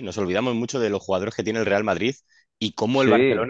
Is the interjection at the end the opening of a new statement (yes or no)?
no